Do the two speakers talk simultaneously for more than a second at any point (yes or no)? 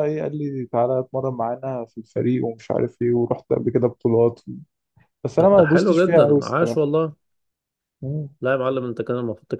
yes